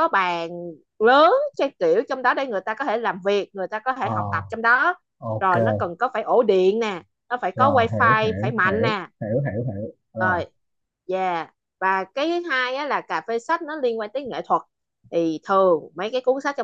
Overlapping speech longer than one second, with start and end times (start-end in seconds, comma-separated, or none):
7.5-9.1